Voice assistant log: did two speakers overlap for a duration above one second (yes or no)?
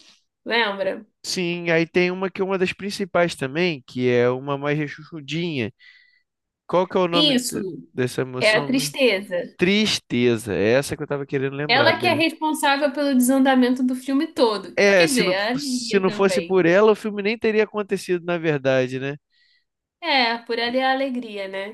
yes